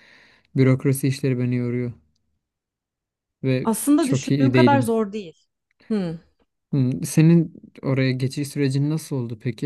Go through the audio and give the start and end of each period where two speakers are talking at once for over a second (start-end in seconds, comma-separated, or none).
3.6-4.9